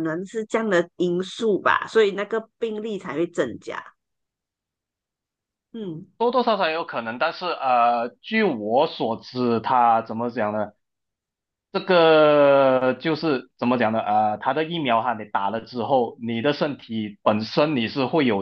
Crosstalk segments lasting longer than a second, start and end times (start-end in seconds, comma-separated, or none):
none